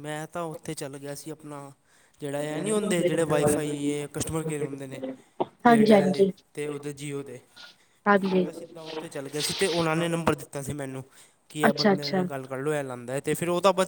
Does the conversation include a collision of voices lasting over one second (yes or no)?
yes